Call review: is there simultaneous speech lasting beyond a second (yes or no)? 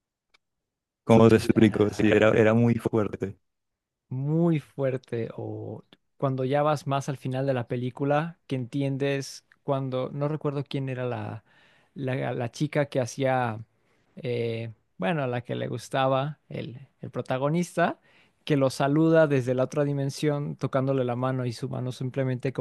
yes